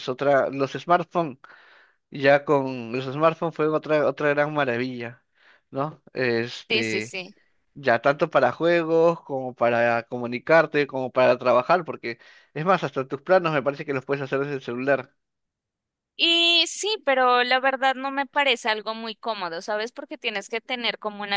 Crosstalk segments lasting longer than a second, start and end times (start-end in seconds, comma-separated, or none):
none